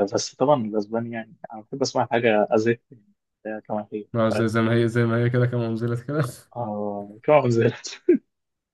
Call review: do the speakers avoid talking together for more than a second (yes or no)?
yes